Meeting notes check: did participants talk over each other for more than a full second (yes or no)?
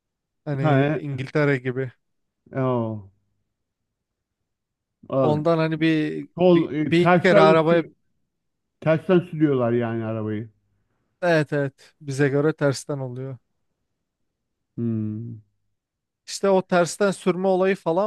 yes